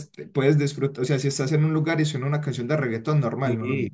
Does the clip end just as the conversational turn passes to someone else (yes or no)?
yes